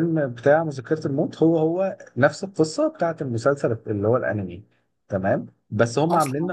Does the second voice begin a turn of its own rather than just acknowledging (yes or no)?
no